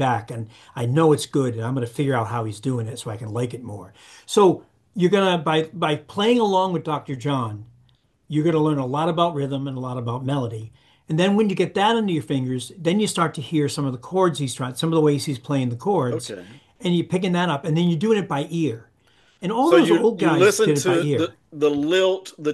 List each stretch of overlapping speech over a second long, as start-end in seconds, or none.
19.6-21.4